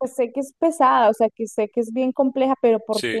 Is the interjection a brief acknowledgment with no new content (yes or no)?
yes